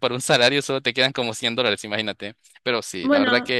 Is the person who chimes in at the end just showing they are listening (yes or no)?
yes